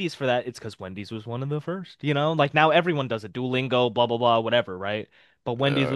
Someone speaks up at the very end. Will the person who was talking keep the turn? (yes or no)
no